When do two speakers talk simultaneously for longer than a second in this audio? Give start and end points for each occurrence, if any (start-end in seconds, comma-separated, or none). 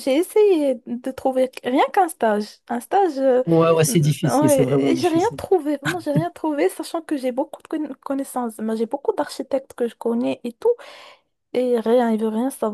3.9-5.4